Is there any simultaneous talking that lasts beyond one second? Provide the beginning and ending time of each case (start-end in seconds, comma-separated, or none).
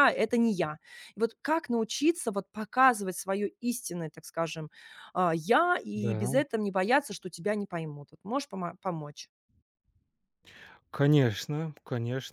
none